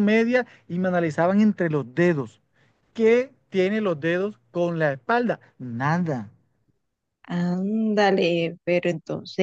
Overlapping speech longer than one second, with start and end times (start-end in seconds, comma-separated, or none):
none